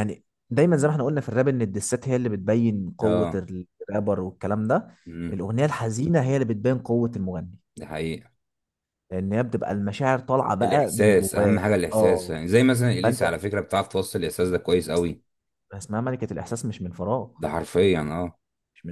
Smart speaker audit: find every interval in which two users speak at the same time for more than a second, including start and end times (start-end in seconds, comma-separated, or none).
10.6-12.4